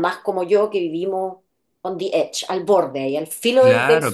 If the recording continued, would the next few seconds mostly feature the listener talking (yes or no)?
yes